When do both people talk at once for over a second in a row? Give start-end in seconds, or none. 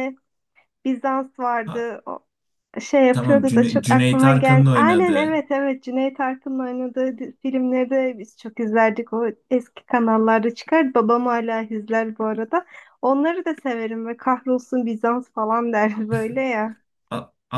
3.1-5.4